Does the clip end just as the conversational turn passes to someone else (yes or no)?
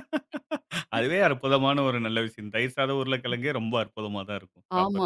yes